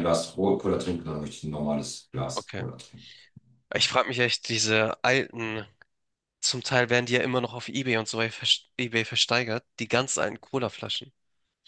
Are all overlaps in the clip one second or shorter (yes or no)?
yes